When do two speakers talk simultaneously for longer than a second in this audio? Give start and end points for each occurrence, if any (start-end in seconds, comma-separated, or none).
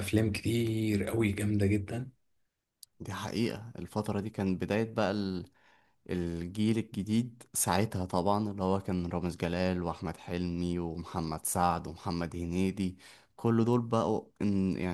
none